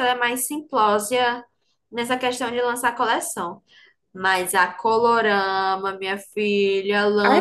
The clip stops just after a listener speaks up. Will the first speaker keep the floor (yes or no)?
no